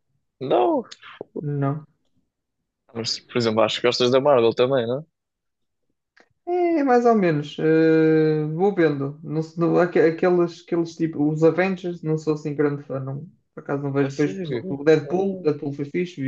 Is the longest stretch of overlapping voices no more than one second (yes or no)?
no